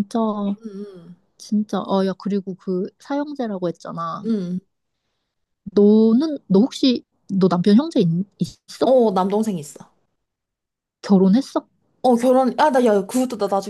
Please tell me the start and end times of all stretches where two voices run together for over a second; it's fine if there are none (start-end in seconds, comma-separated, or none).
none